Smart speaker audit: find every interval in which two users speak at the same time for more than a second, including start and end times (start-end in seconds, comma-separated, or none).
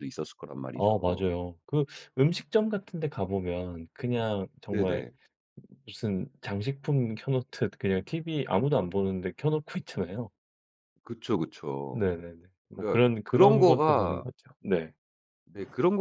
12.7-14.3